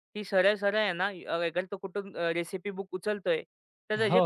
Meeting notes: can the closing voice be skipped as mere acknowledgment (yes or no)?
yes